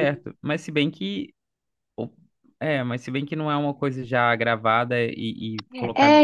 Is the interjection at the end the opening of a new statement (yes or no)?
yes